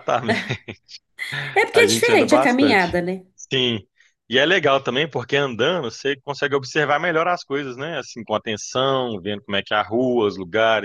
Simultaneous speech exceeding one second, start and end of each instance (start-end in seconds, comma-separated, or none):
1.7-3.0